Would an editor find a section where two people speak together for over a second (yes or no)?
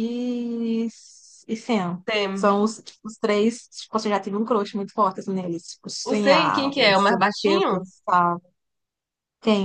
yes